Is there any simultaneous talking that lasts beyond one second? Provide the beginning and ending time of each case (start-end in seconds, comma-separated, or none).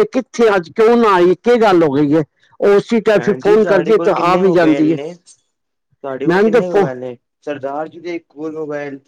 none